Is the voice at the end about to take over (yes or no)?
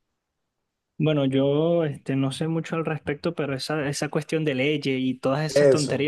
no